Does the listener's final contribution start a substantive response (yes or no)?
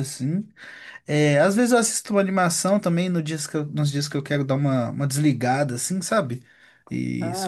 no